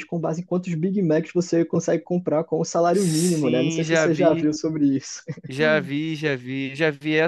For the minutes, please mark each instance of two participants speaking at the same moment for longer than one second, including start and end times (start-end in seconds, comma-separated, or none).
2.9-4.5